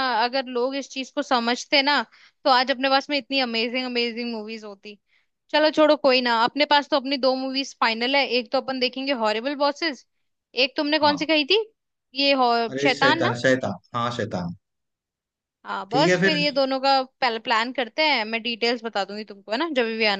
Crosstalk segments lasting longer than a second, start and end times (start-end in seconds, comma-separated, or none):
none